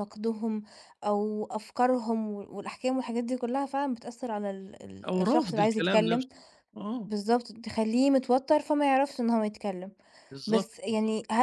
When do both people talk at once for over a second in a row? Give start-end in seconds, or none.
5.1-6.3